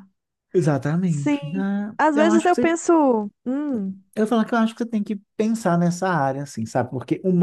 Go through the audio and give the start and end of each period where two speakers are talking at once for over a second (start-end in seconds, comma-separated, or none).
1.0-2.7